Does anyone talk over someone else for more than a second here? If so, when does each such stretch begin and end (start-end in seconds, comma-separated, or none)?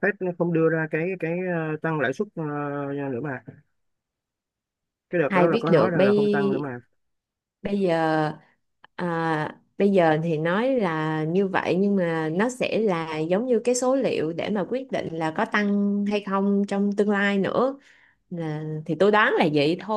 5.3-6.7